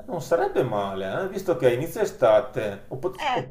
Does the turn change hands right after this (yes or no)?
no